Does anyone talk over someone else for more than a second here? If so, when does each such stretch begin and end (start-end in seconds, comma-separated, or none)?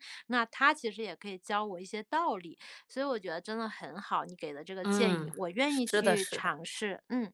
4.8-6.6